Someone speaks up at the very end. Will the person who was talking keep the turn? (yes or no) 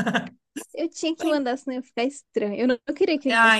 no